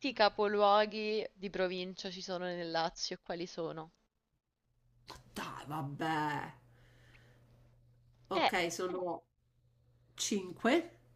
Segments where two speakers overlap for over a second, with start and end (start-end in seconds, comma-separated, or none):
none